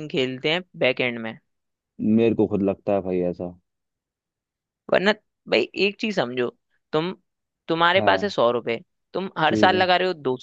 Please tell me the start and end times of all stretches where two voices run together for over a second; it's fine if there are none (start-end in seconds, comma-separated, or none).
none